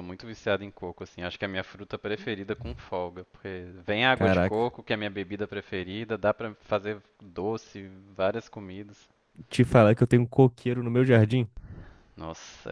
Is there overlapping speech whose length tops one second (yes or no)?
no